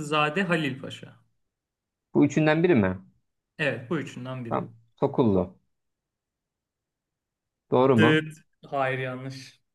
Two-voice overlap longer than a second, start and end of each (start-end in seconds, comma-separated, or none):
none